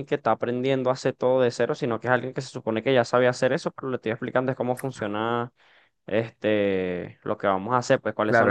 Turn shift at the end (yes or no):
yes